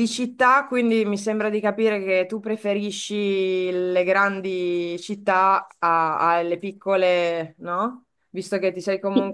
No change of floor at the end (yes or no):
yes